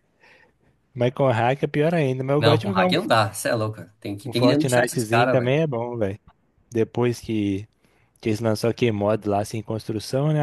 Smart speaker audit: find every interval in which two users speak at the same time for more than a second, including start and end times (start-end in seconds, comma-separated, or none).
4.2-5.6